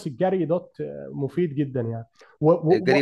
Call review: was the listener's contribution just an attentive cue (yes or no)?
no